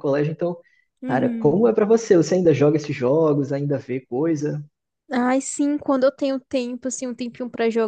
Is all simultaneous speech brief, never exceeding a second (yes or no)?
yes